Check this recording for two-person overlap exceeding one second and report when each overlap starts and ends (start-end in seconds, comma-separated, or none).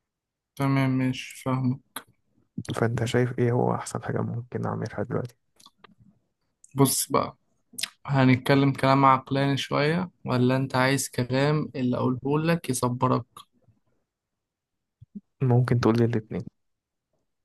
none